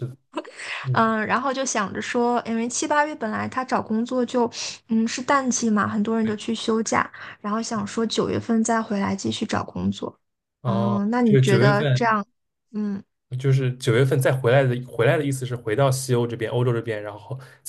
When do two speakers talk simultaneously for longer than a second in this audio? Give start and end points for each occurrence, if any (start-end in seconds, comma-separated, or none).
10.6-12.2